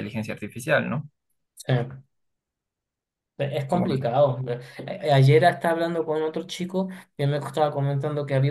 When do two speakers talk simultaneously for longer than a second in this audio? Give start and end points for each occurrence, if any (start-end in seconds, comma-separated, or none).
none